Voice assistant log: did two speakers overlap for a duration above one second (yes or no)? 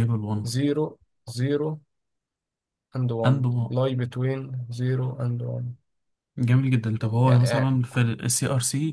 no